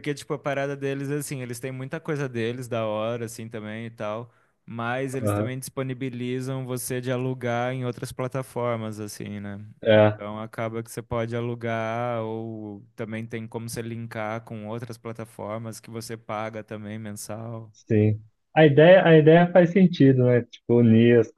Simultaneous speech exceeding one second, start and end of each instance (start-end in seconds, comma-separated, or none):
none